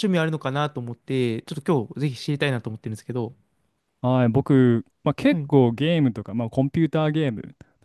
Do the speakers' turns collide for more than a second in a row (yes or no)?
no